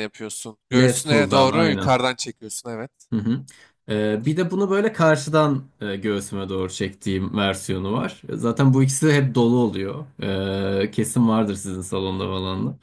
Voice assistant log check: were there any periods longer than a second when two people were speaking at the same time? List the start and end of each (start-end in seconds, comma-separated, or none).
0.7-2.0